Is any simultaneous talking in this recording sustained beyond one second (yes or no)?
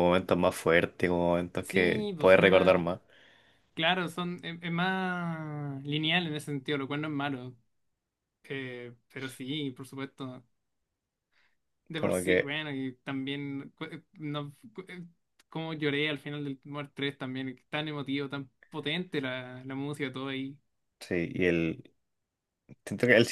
yes